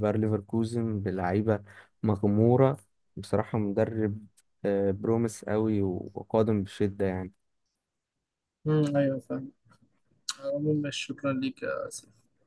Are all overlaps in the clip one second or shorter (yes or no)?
yes